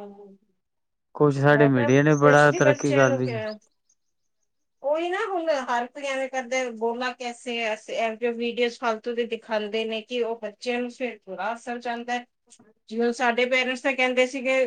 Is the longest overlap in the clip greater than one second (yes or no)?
yes